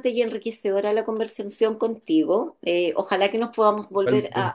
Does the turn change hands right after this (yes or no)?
no